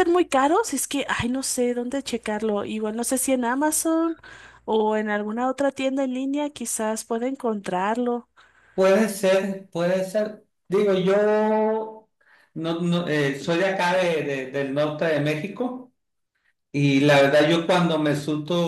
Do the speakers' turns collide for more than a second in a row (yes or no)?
no